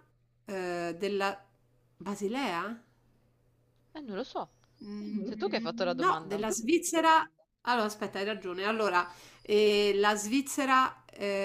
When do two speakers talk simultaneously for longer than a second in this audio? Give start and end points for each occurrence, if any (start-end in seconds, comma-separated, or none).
5.2-6.4